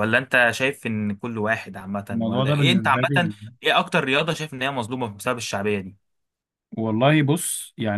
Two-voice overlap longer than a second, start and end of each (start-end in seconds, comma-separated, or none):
2.1-3.3